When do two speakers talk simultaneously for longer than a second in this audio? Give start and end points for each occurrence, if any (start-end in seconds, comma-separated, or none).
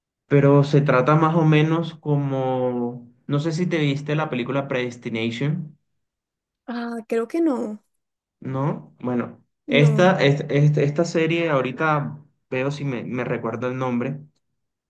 none